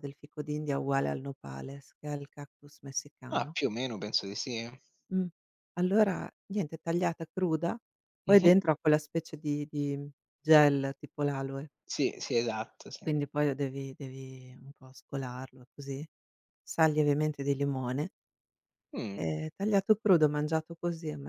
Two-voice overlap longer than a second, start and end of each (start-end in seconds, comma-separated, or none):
none